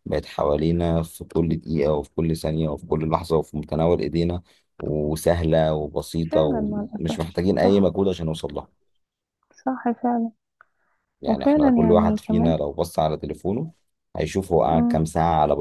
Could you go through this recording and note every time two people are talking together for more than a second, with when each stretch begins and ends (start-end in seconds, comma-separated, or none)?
6.3-7.9, 11.3-12.6